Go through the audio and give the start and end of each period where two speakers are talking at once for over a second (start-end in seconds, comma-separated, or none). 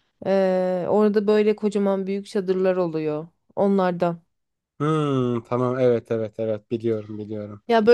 none